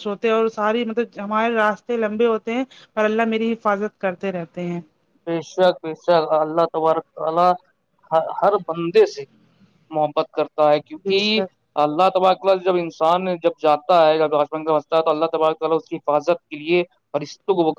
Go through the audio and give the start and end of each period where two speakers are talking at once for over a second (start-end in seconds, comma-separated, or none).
none